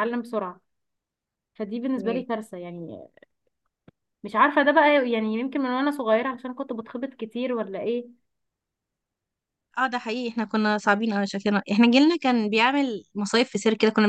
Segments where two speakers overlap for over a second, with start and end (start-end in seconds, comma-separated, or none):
none